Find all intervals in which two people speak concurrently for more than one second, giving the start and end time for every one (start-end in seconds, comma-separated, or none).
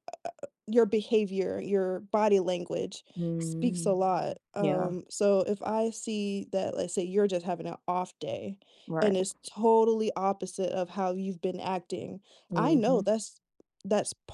none